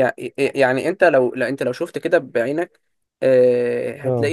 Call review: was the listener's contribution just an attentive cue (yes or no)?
yes